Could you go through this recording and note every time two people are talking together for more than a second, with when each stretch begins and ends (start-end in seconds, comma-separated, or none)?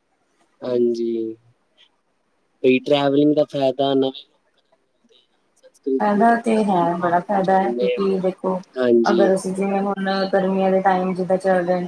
6.5-8.2